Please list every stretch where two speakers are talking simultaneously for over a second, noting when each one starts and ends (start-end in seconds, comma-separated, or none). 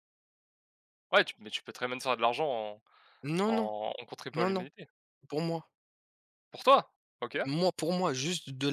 none